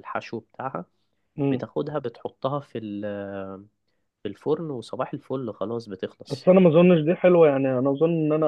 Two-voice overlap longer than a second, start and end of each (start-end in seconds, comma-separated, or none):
none